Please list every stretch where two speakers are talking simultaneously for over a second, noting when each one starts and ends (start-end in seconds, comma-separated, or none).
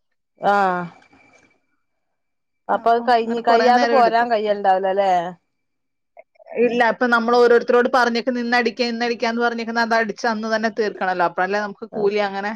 none